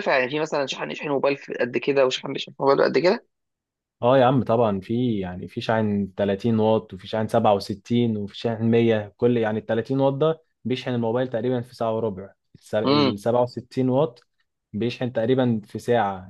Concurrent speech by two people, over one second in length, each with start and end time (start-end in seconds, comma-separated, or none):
none